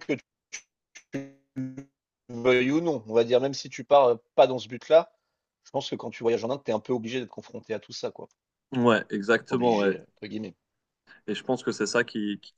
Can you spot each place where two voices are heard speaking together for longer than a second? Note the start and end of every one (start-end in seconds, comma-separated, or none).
none